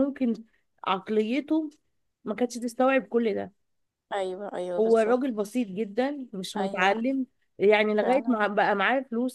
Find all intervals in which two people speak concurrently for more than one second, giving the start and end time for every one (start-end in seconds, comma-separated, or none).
none